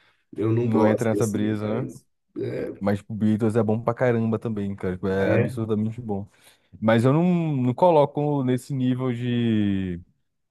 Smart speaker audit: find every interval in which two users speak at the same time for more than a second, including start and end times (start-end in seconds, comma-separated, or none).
0.6-1.8